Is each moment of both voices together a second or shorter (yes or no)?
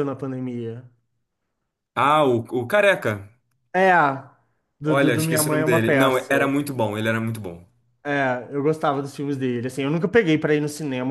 no